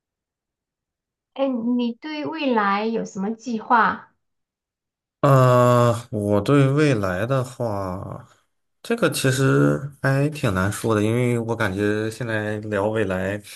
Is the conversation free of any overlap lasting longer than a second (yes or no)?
yes